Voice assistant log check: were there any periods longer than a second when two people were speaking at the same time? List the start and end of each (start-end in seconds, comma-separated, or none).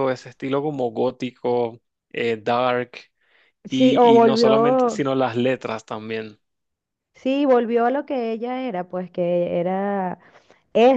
3.7-5.0